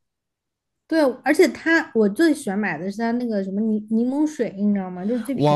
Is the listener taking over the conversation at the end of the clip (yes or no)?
yes